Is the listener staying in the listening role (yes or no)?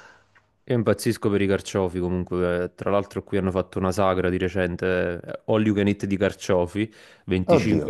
yes